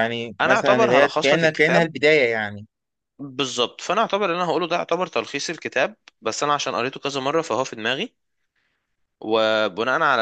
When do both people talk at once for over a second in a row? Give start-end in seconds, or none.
0.5-1.9